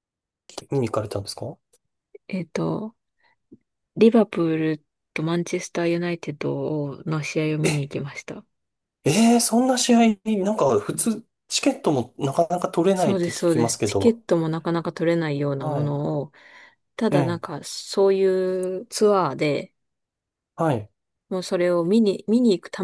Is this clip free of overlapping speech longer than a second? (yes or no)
no